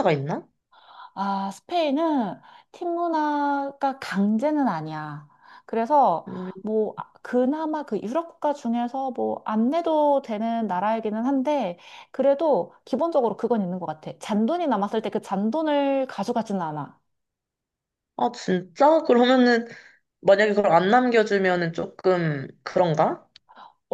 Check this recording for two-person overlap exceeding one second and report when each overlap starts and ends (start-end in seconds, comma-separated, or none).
none